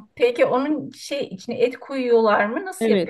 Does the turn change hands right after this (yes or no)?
yes